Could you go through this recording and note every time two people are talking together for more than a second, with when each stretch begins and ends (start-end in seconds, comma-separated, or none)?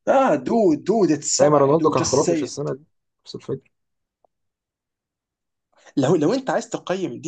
1.4-2.7